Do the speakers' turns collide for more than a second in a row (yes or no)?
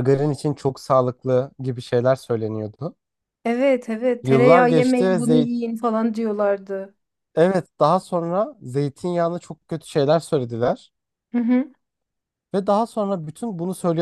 yes